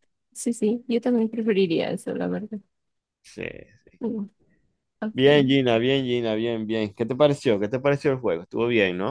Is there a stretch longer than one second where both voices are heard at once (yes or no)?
no